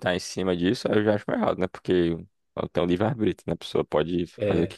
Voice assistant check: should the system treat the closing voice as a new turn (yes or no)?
no